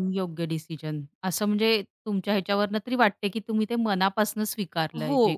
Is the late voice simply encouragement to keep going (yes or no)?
no